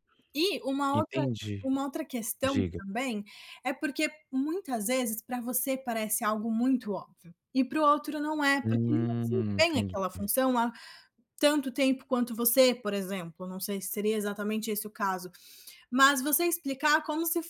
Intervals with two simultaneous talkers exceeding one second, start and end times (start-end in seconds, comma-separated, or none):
8.6-10.0